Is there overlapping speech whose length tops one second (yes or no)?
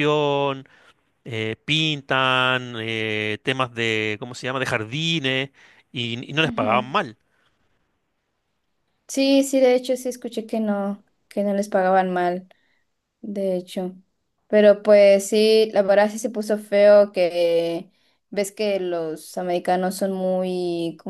no